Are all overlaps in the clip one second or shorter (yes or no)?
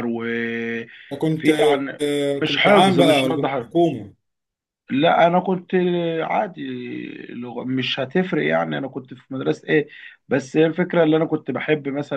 no